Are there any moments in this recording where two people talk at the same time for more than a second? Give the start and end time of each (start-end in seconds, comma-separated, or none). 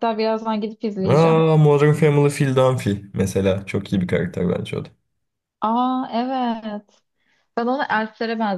none